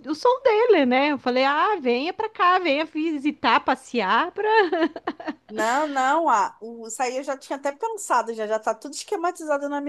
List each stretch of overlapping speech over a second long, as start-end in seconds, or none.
none